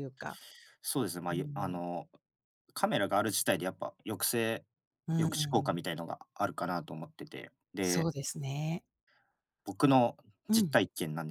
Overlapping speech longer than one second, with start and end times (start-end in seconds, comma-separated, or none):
none